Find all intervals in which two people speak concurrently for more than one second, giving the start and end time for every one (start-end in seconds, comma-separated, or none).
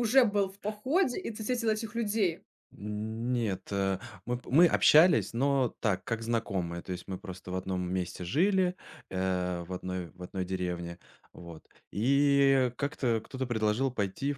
none